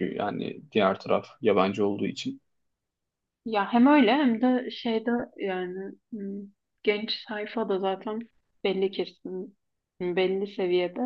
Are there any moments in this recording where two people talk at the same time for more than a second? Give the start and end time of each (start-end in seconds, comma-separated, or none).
none